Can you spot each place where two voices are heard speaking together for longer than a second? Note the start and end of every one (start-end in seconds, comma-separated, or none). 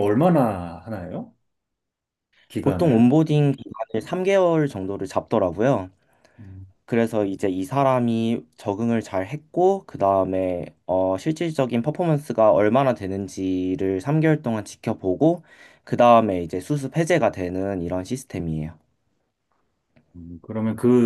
none